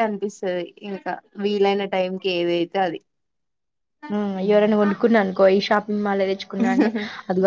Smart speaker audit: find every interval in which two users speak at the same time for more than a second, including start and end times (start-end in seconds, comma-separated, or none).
none